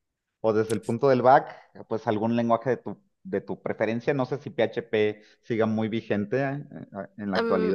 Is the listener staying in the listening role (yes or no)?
no